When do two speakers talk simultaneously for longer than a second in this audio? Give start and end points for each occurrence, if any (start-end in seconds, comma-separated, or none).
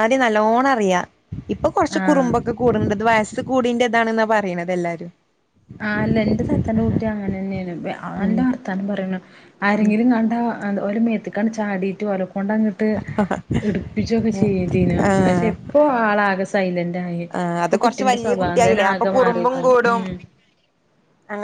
17.6-20.0